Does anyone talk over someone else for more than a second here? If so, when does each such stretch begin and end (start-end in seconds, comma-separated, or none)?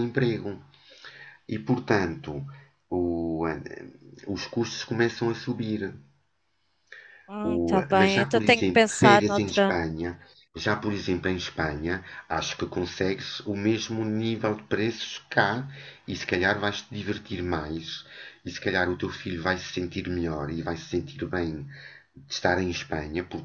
7.4-9.8